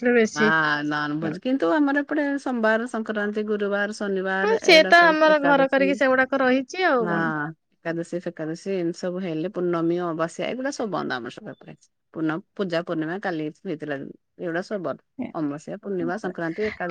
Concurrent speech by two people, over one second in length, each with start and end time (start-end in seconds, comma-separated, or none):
4.4-7.2